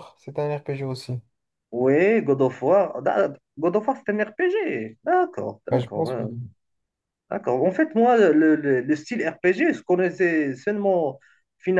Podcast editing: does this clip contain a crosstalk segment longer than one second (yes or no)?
no